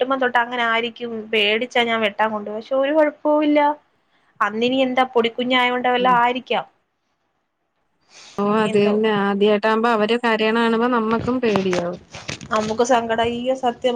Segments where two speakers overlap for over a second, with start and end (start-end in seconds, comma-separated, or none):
none